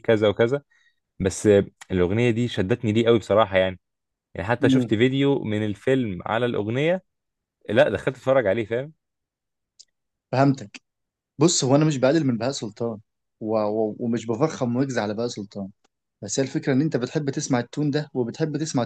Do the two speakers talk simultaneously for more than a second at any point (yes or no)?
no